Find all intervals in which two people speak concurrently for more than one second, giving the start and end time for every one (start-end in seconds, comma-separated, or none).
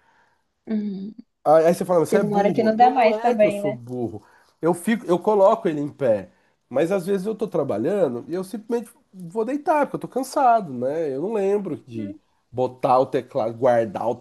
2.1-3.8